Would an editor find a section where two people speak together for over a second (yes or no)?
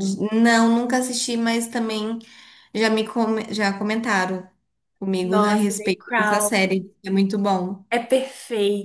yes